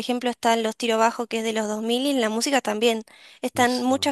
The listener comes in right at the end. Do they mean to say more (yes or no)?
no